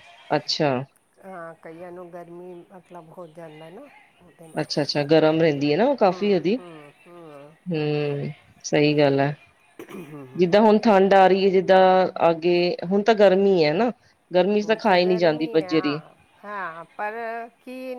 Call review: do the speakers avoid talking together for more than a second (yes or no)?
no